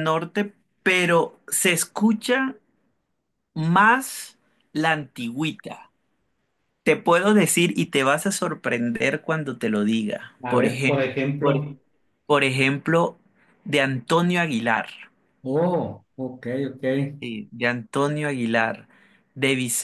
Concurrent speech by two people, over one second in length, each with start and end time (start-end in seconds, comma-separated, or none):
10.4-11.8